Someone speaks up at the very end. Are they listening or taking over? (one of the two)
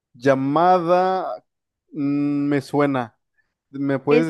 taking over